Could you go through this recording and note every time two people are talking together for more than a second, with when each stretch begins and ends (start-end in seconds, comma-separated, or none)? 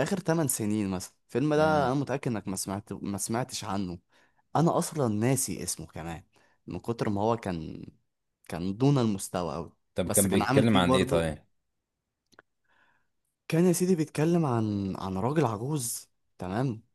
9.9-11.3